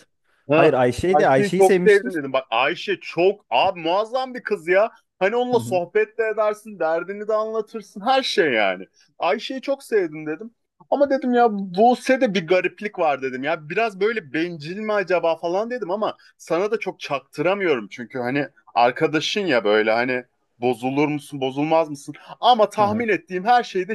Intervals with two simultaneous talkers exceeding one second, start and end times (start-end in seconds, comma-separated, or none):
0.5-2.1